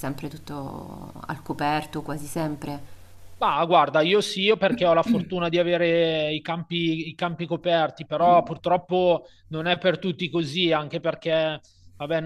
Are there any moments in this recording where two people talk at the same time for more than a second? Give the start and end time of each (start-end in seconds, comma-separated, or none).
none